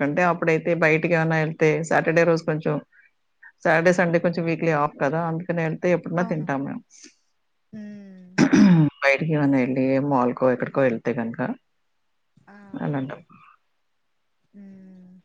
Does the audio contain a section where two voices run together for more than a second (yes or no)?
no